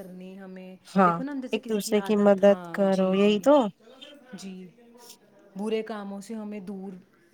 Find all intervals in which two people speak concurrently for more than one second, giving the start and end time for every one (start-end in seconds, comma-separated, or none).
1.0-3.4